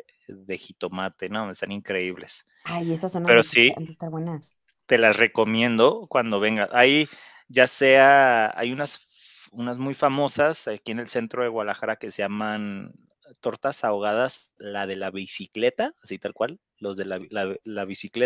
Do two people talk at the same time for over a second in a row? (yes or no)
no